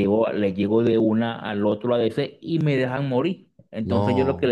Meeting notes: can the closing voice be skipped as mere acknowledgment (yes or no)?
yes